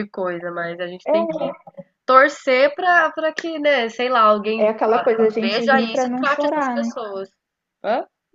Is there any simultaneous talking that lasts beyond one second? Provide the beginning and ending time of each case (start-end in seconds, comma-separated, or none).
5.4-6.9